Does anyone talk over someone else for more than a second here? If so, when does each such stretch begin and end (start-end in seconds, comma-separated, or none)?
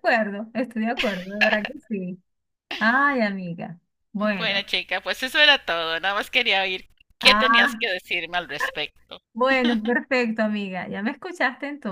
none